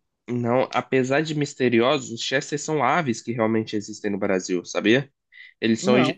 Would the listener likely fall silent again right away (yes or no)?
yes